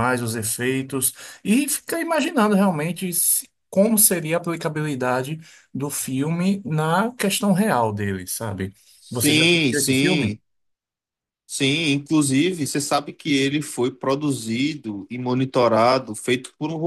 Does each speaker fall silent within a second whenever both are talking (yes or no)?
no